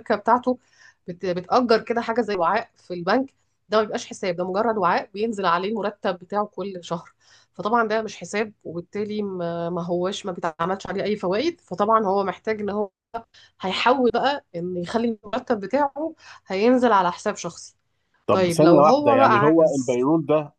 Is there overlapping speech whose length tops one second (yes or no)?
yes